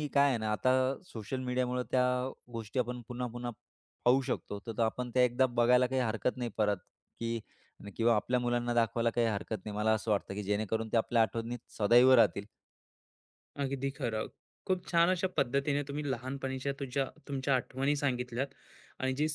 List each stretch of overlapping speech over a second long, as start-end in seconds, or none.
none